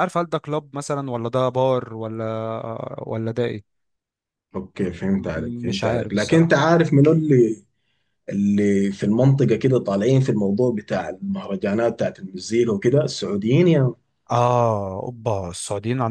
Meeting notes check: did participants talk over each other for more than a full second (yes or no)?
yes